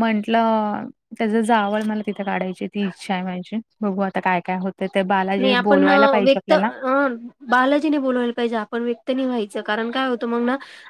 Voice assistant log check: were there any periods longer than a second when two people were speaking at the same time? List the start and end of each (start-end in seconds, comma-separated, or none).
none